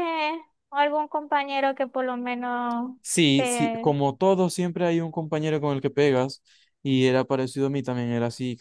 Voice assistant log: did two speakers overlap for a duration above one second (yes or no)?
no